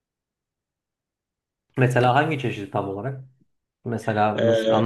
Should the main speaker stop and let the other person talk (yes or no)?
no